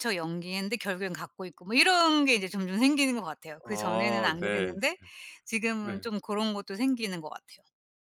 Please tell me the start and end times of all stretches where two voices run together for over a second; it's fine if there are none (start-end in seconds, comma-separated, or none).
3.6-4.9